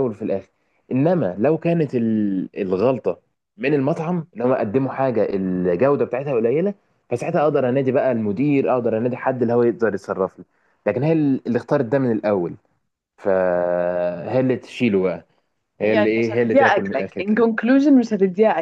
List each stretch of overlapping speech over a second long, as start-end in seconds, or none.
15.8-17.5